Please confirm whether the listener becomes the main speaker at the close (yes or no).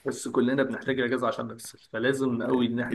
no